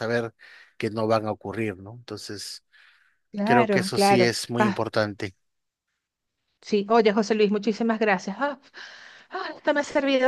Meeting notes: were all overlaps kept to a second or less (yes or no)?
no